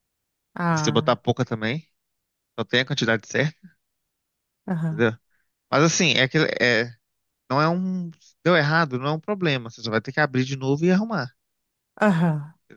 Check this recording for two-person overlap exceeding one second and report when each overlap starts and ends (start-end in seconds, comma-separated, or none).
none